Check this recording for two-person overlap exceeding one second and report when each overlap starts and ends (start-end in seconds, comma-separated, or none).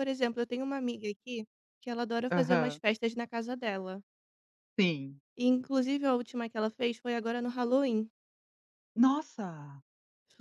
none